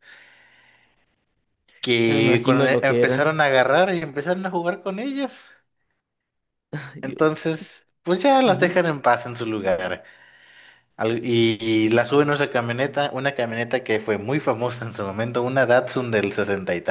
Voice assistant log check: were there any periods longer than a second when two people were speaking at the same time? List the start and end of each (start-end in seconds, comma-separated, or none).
2.0-3.4